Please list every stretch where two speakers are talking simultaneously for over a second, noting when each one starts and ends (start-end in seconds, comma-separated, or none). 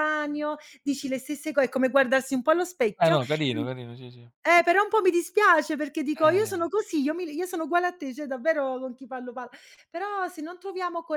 none